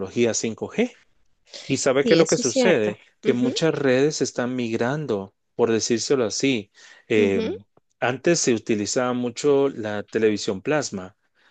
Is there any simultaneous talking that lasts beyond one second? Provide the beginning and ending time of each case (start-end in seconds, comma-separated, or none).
2.0-3.5